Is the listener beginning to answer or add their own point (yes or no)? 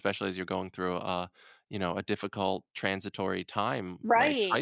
yes